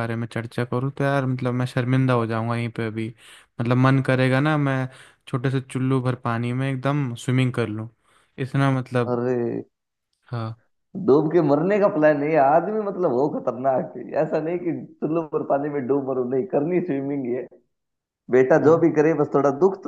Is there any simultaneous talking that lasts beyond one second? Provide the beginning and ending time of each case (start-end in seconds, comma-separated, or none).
none